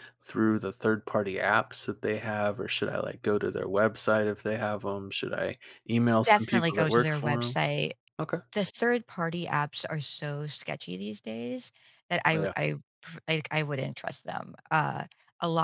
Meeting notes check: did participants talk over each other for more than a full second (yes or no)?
yes